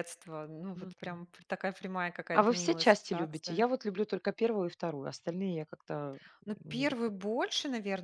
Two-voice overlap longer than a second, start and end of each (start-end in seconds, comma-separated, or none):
2.3-3.6